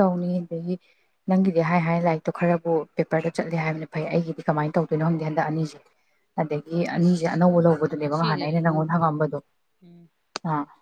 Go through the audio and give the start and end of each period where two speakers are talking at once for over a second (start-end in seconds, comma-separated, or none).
7.0-9.2